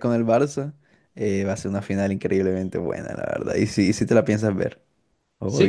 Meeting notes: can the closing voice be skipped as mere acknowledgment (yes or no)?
no